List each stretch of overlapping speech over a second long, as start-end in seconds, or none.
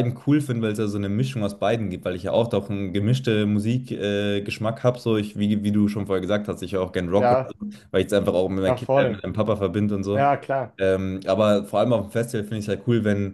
none